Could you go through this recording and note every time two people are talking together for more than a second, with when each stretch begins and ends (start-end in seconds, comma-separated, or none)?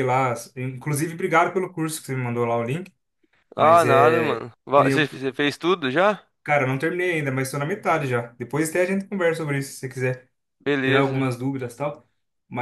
3.6-5.1